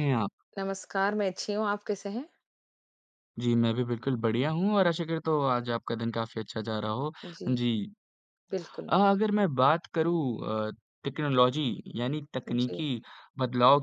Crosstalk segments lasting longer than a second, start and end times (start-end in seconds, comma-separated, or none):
none